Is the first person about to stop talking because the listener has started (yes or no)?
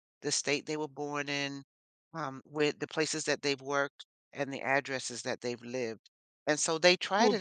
no